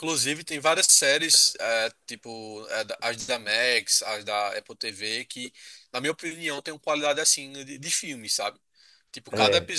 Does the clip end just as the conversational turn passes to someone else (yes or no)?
no